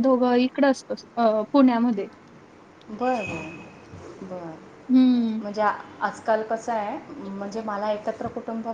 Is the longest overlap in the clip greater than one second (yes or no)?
no